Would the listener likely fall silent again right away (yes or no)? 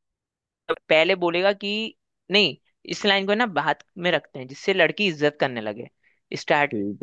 yes